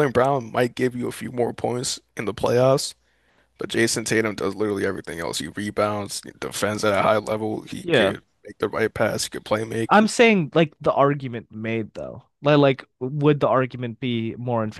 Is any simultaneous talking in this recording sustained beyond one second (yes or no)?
no